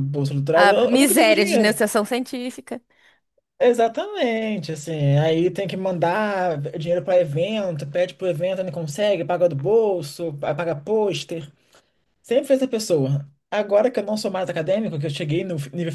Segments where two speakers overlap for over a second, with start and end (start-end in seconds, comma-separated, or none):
0.5-1.8